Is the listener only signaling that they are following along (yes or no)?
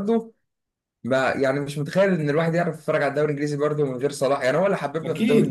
no